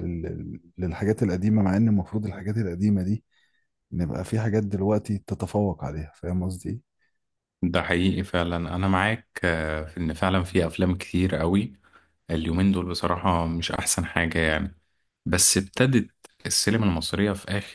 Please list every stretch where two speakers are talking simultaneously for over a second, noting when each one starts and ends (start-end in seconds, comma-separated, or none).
none